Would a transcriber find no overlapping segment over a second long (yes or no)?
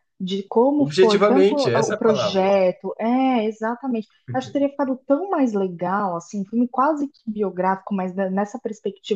no